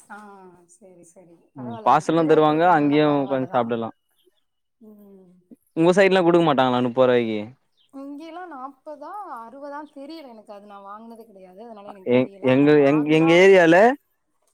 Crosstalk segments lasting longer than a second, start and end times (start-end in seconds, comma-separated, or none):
1.6-3.6